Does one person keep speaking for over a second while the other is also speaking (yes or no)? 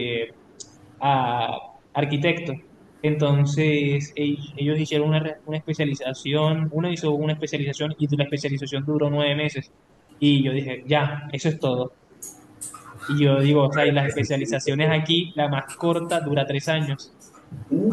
yes